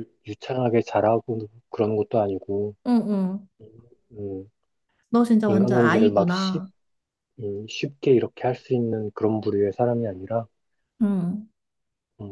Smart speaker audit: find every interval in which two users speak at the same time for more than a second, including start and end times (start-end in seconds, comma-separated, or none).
5.4-6.6